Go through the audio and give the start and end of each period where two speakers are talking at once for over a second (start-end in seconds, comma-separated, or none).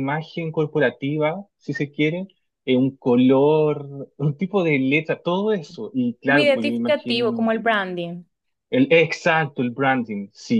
6.2-7.5